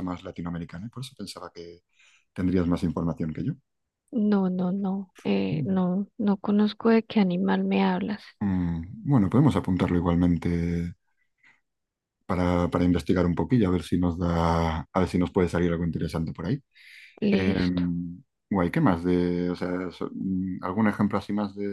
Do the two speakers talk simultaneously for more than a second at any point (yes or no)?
no